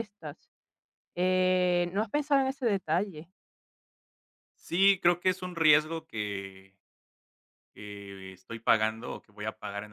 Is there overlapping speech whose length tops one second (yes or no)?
no